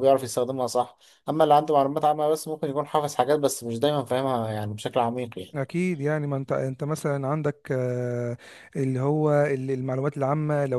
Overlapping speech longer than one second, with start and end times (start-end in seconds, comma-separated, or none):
none